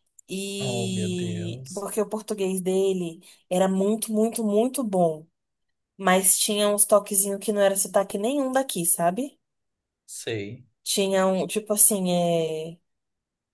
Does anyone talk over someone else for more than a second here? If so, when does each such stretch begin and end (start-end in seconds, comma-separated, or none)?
0.6-1.9